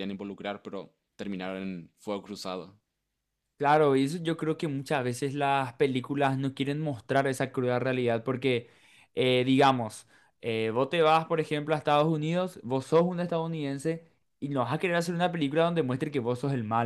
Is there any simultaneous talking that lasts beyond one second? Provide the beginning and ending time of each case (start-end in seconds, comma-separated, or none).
none